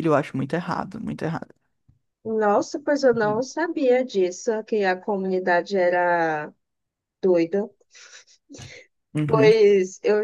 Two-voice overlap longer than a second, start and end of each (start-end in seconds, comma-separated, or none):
none